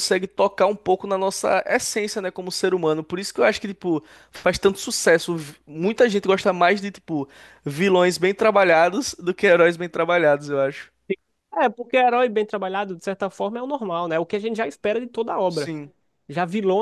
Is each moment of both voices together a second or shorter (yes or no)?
yes